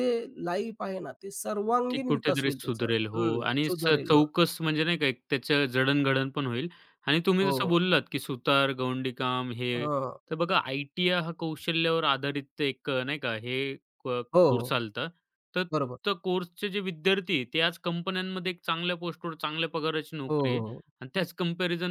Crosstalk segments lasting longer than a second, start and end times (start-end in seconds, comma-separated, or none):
1.9-4.1